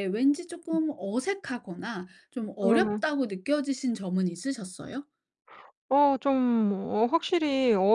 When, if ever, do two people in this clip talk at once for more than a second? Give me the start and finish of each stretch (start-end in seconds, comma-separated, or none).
none